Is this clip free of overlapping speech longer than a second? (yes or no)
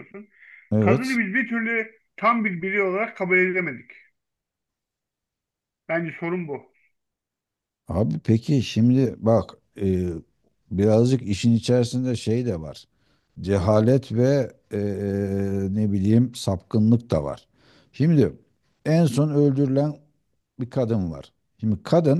yes